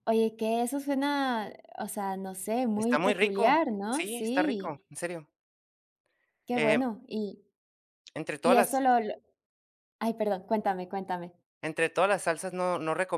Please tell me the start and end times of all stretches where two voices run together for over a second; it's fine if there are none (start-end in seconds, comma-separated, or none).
2.8-4.8